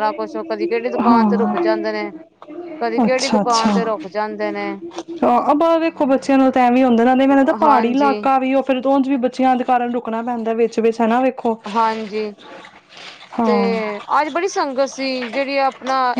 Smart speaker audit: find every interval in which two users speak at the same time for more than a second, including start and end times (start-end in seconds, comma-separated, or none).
none